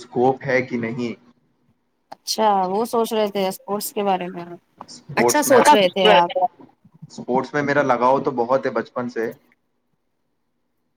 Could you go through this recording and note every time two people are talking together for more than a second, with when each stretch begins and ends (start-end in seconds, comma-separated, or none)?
none